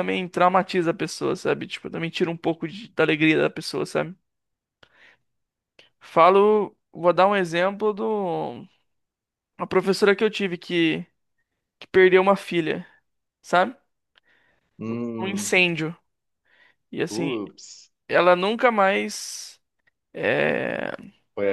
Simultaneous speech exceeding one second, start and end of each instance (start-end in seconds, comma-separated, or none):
none